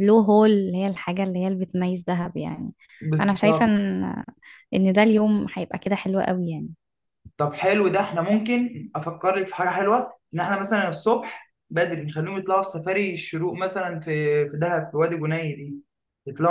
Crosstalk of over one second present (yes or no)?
no